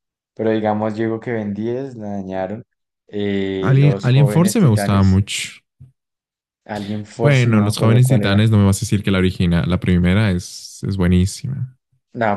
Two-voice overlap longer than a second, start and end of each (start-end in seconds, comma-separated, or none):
3.6-5.2, 7.2-8.4